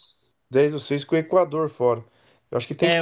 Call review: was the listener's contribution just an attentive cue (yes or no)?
no